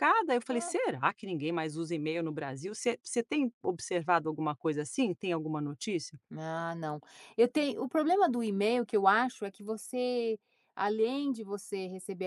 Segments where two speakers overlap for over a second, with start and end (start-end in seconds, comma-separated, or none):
none